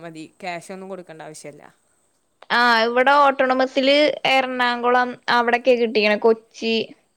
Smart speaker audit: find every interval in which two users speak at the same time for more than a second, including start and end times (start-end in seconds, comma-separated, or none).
none